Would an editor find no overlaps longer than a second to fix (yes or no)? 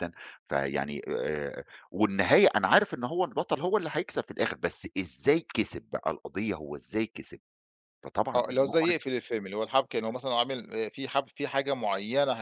yes